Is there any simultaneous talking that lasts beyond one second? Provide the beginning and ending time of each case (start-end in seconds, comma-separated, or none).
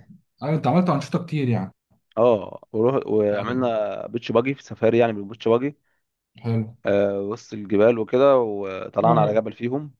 none